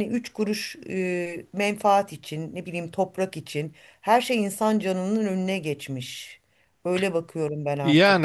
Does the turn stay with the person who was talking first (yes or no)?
no